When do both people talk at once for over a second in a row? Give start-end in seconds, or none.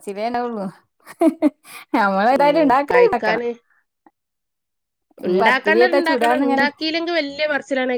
5.3-6.7